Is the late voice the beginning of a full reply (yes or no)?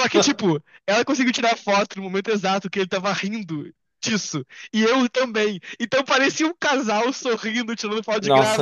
yes